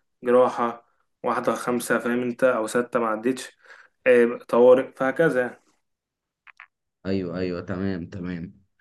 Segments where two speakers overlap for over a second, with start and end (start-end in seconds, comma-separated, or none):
none